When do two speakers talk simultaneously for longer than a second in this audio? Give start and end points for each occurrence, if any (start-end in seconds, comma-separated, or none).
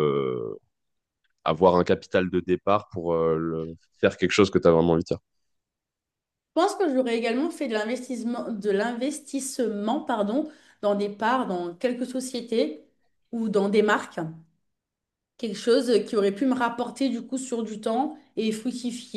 none